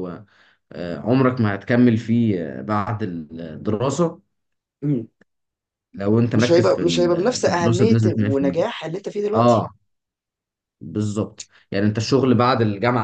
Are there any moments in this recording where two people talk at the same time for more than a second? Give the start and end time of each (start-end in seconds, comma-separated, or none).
6.3-8.6